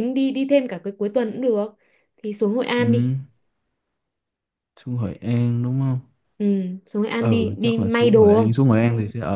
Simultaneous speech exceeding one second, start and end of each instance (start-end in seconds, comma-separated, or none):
7.2-8.5